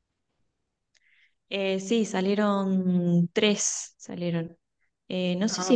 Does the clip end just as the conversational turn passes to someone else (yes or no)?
no